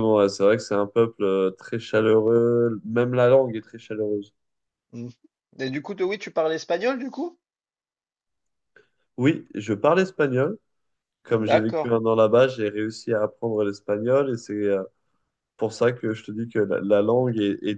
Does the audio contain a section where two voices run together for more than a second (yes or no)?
no